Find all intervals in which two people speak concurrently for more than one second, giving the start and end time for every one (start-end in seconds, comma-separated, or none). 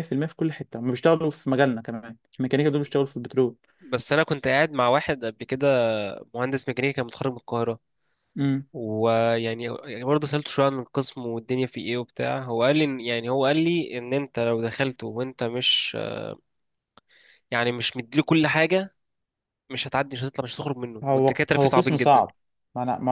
21.0-22.2